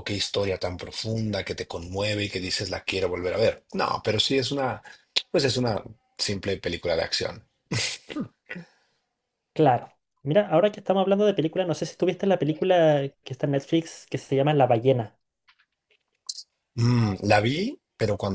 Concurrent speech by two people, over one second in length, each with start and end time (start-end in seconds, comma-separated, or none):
none